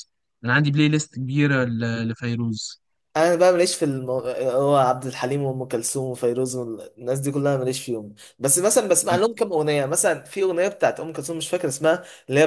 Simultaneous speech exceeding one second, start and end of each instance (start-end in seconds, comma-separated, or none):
none